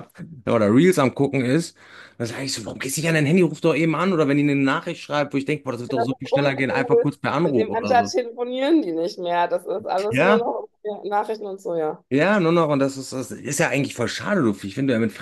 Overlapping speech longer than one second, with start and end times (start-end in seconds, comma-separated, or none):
6.0-8.1